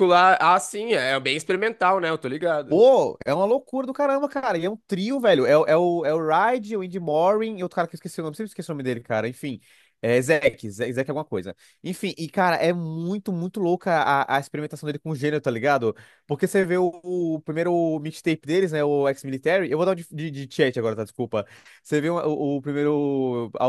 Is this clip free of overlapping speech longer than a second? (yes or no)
yes